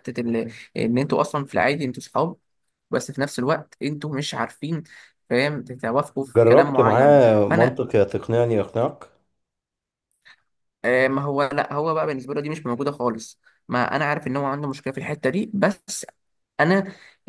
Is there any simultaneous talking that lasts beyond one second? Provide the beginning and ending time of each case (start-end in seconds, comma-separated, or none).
6.4-7.8